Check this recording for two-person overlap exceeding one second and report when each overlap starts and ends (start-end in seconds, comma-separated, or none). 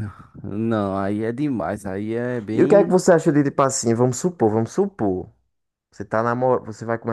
none